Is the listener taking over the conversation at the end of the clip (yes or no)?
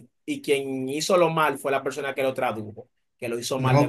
yes